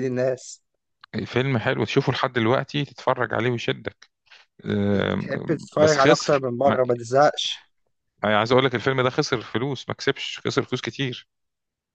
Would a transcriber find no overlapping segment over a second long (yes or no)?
no